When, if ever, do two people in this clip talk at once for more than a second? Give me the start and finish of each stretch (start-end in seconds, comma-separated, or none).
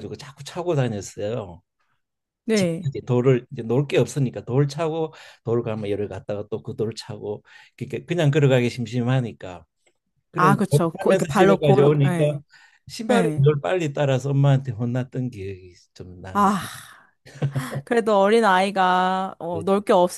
10.3-12.4